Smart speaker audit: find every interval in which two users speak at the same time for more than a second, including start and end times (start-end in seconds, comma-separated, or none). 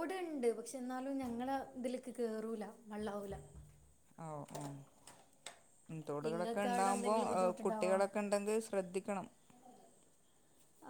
6.3-7.9